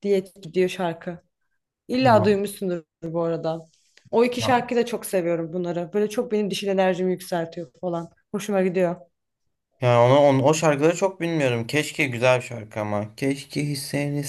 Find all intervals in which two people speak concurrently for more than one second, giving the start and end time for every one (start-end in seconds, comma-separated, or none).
none